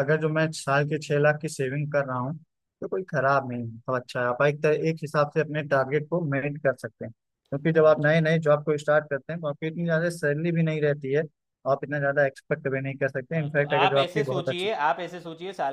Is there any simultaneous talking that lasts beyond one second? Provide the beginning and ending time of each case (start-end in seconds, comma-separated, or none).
13.3-14.7